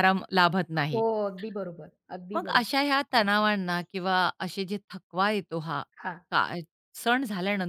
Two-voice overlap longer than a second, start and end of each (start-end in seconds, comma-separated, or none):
none